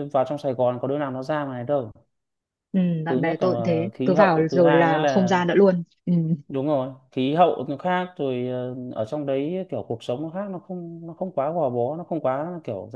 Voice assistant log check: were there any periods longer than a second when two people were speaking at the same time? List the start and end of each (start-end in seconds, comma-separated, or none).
3.1-5.4